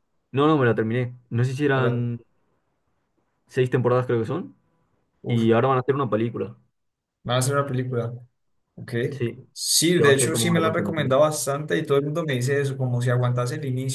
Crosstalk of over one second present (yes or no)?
yes